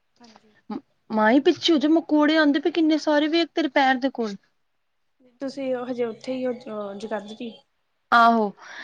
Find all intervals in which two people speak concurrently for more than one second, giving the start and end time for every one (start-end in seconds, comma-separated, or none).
none